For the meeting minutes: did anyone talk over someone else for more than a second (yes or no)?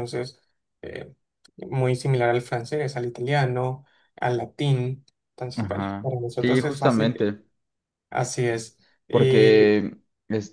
yes